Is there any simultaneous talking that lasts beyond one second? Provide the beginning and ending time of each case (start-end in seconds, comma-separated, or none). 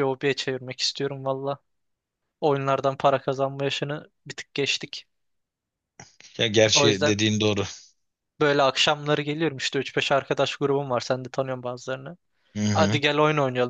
none